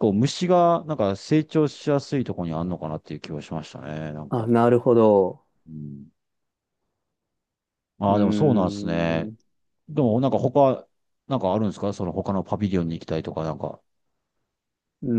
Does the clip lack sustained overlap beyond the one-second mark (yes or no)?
no